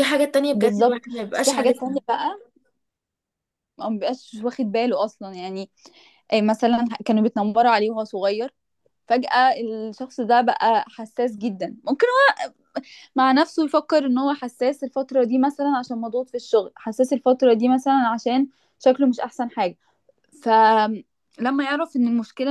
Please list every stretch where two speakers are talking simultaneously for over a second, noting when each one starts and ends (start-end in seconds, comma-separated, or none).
0.5-2.0